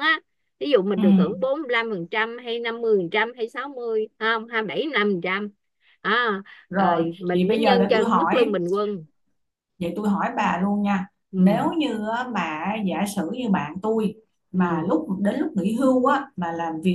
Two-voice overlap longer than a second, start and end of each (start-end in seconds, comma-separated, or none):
6.8-8.6